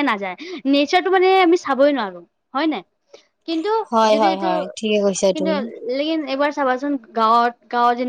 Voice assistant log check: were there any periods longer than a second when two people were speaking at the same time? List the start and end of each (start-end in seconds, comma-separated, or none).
none